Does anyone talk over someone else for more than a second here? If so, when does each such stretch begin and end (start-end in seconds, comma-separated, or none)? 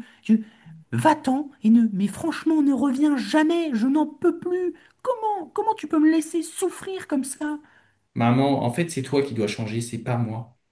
none